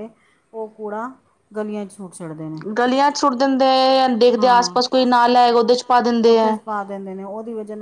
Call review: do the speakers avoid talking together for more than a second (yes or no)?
yes